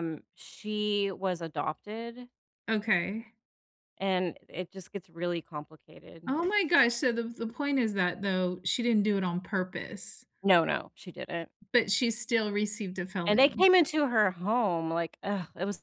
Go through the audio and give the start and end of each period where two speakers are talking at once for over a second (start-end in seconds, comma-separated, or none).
none